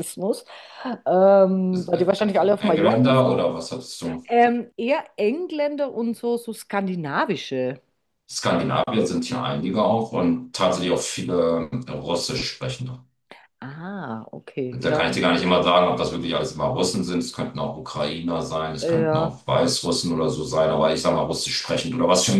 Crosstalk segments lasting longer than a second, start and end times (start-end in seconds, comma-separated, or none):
1.7-3.4